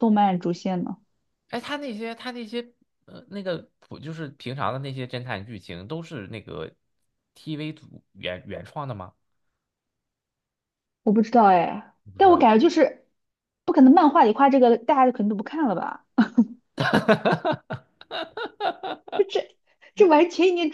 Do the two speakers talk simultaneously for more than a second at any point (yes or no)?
no